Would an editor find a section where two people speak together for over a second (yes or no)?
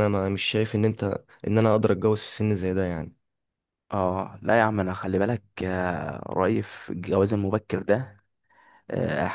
no